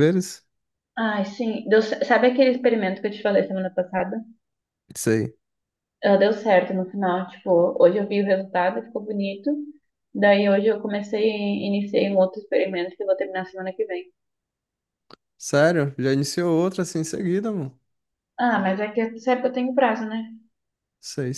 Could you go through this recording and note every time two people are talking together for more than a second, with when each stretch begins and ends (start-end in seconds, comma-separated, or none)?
none